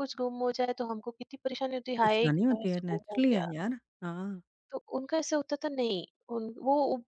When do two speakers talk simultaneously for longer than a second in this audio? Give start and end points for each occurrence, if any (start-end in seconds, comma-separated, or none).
2.0-3.5